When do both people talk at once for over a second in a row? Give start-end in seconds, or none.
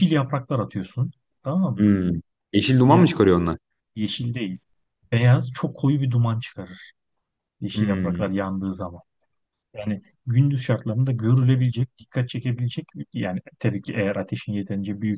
none